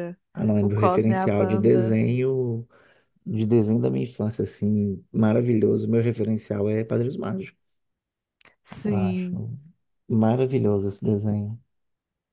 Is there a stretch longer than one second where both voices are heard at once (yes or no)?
yes